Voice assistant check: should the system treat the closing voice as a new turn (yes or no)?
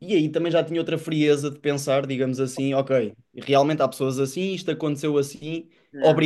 no